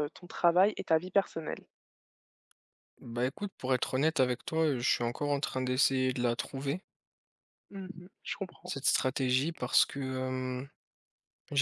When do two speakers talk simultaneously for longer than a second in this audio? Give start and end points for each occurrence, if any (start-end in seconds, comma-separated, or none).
none